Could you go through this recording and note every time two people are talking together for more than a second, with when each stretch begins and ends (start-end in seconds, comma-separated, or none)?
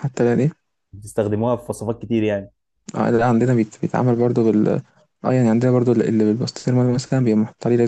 none